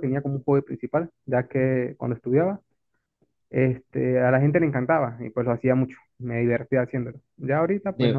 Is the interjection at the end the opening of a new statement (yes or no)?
no